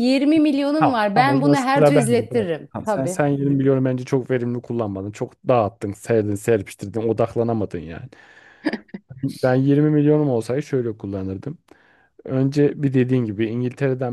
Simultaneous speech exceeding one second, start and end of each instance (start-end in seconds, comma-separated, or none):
0.8-3.2